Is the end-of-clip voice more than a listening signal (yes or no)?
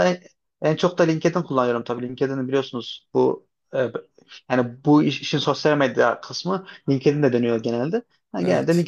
no